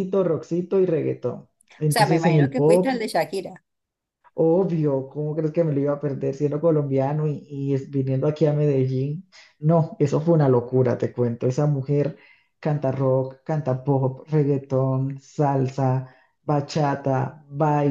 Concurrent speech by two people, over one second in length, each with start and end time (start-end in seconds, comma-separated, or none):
1.9-3.1